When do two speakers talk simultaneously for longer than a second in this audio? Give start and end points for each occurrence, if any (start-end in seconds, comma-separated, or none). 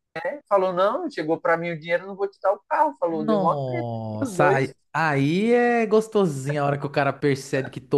3.1-4.8